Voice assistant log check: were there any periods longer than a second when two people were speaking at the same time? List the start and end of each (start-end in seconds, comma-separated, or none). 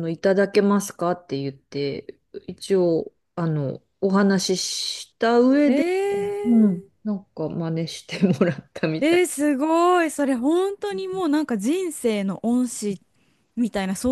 none